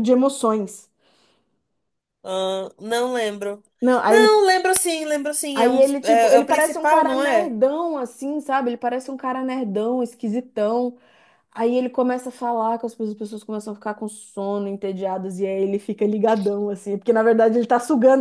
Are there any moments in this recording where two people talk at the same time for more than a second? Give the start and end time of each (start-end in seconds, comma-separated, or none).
5.5-7.5